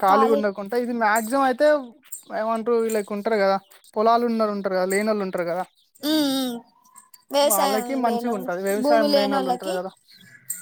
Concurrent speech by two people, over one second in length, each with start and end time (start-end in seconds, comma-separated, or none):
7.5-9.7